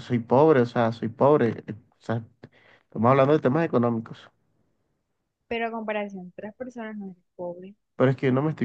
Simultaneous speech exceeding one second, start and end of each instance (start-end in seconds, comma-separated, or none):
none